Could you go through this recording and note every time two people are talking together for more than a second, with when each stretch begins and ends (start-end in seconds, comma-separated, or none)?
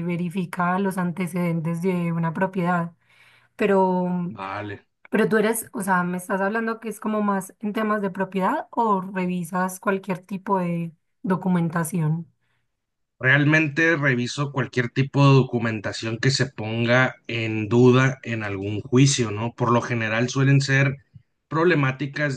none